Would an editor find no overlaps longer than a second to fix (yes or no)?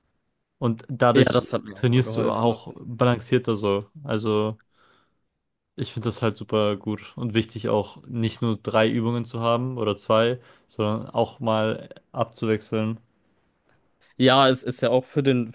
no